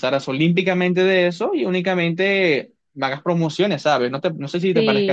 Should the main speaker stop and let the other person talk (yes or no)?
yes